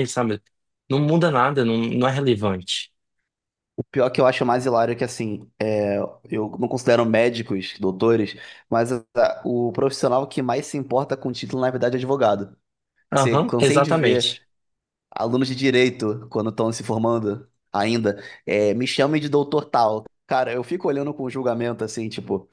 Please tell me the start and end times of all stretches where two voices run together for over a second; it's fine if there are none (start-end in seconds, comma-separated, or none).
13.1-14.4